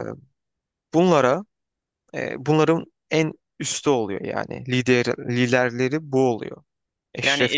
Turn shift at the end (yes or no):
yes